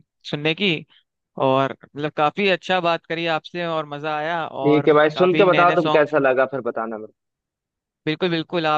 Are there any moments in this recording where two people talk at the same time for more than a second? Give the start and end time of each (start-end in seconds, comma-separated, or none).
4.6-6.1